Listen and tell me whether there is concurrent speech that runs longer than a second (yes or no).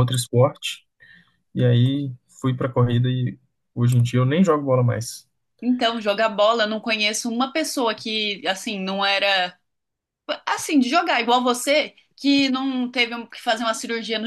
no